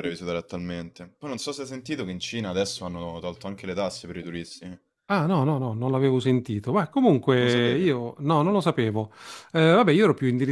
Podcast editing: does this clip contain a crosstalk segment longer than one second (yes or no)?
no